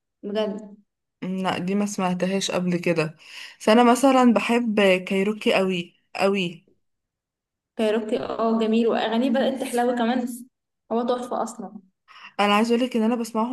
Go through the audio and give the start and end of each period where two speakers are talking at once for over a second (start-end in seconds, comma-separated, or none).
none